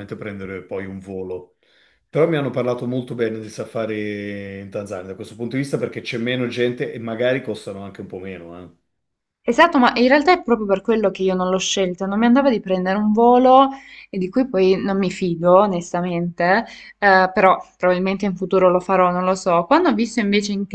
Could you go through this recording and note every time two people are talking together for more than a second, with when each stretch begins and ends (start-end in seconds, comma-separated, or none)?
none